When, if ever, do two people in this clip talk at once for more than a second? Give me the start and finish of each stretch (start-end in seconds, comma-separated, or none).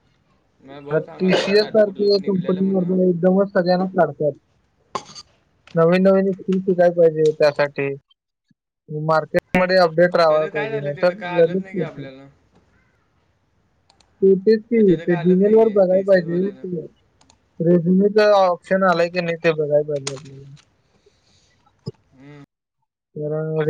1.2-3.0, 10.3-11.9, 15.1-16.6